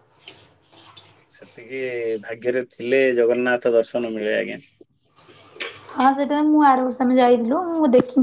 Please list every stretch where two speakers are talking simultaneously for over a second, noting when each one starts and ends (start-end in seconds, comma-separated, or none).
none